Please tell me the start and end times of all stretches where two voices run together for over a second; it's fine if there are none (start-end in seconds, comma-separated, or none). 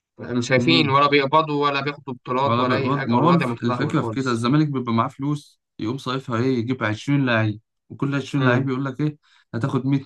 2.4-4.5